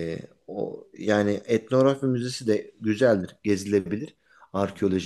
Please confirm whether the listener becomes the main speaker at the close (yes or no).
no